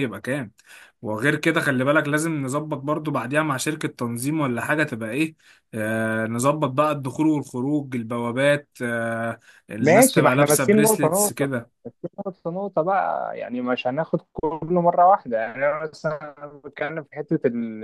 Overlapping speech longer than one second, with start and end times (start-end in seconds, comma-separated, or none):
9.8-11.5